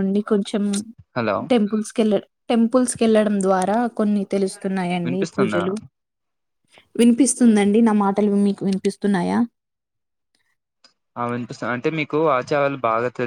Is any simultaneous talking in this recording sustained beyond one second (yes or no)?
no